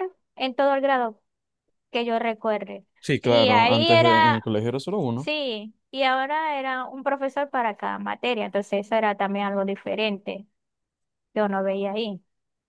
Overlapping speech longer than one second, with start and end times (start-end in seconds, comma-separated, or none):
3.2-4.4